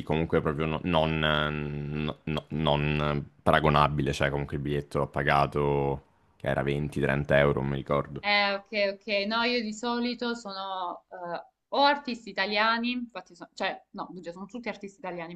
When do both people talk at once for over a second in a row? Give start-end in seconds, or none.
none